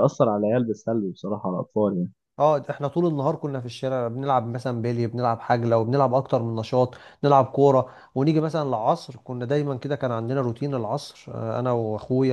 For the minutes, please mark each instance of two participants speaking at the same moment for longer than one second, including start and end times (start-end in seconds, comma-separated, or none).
none